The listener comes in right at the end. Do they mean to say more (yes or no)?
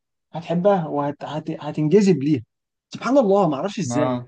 no